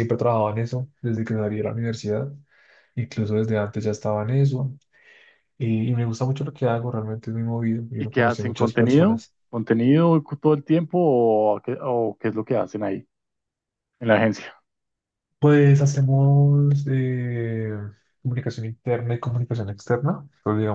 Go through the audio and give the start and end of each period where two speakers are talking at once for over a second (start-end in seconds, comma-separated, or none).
8.0-9.3